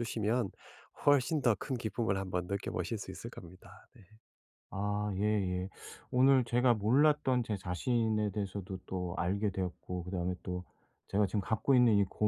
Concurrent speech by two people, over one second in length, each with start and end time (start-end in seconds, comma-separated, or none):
none